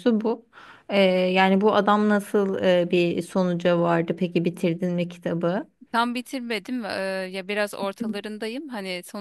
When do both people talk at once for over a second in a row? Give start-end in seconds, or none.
none